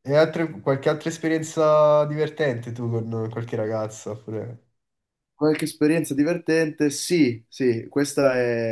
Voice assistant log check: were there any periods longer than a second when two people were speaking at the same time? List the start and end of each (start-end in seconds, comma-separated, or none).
none